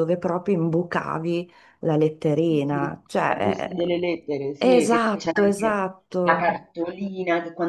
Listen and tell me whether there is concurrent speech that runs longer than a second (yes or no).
yes